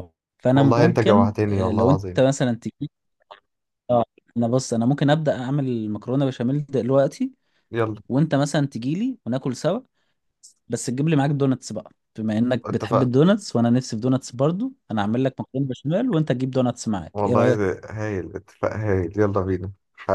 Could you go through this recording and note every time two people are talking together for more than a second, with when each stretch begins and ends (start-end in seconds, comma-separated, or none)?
0.5-2.2